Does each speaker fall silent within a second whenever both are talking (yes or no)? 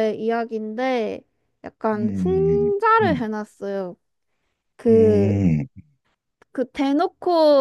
no